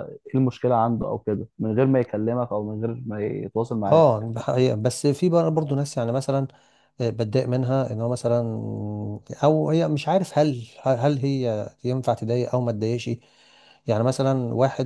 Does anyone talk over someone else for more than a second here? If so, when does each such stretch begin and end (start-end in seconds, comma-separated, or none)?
none